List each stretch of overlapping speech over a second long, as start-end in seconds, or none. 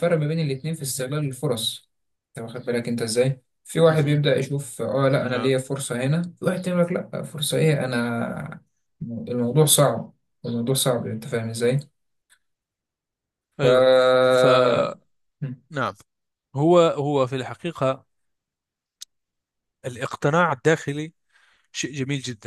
none